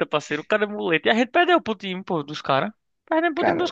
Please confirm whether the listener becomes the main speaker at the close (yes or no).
no